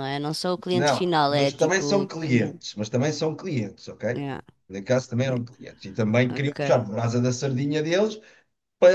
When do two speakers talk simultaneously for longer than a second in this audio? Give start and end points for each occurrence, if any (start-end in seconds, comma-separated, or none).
0.7-2.6